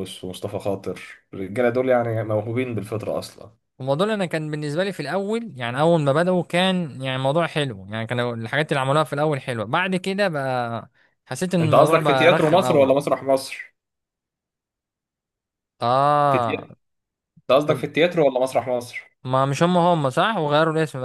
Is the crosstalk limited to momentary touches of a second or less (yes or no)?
no